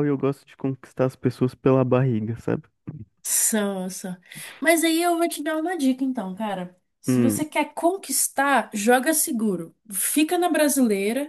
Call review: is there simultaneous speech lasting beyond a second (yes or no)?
no